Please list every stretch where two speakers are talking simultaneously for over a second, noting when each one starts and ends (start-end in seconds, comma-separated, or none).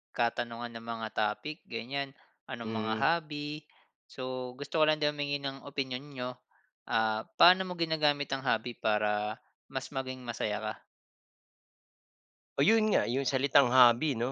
none